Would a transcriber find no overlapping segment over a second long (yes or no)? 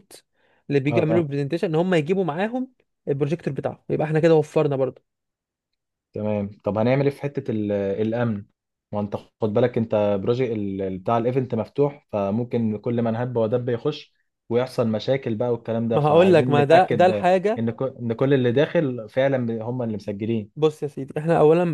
no